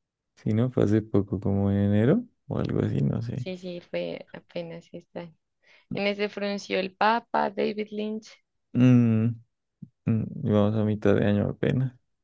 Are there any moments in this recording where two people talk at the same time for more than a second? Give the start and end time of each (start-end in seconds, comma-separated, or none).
none